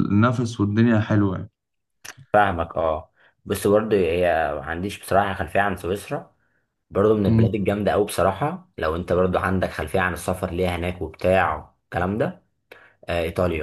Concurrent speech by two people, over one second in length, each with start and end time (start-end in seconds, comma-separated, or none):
none